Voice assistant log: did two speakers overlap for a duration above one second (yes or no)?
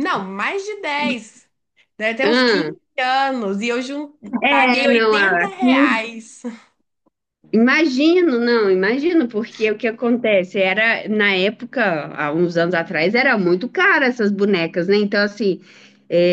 yes